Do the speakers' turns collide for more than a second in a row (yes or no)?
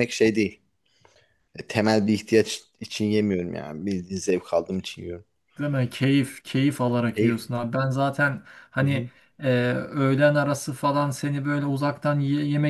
no